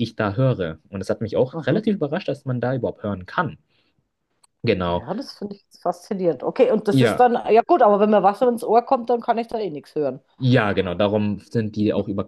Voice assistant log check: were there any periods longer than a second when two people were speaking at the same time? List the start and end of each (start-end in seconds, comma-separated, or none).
none